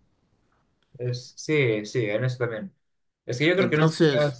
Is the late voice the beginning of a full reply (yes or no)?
no